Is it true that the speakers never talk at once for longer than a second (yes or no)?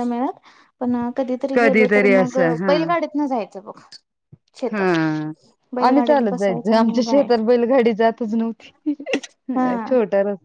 no